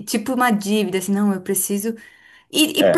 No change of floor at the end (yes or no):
yes